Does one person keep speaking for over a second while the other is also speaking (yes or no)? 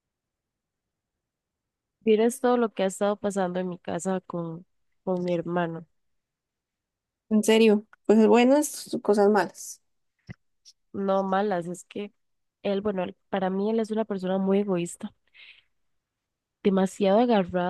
no